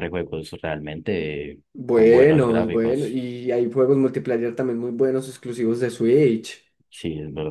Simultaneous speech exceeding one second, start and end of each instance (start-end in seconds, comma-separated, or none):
1.9-3.2